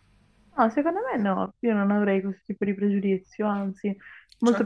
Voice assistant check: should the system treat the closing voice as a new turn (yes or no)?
yes